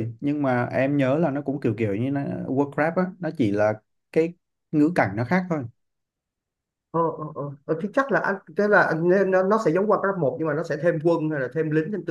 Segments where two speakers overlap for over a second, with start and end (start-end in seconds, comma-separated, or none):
none